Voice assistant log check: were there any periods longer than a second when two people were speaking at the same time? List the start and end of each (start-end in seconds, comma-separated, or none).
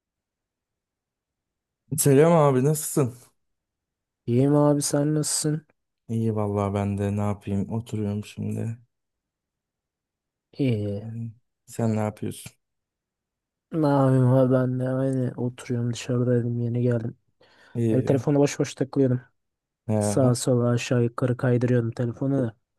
none